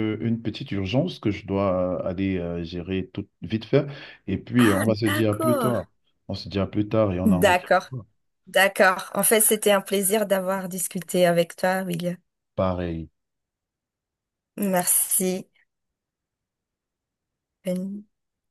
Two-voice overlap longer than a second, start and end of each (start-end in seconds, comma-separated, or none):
4.6-5.9